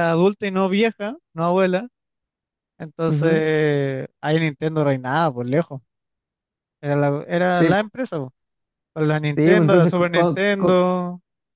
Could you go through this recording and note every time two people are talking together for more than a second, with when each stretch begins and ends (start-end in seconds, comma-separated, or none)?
9.3-10.8